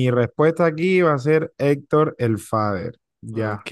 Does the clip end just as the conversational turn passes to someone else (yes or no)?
yes